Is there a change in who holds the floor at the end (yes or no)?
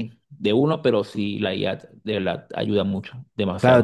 yes